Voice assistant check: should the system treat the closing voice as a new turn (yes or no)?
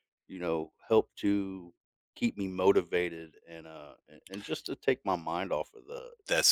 yes